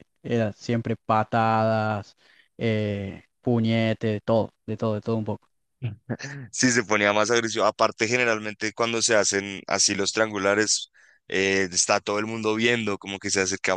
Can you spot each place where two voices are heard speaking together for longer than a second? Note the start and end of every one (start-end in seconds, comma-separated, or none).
none